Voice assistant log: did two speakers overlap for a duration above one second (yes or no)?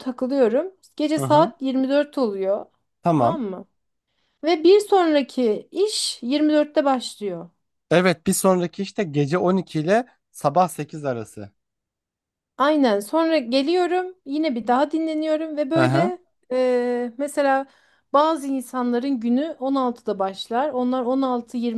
no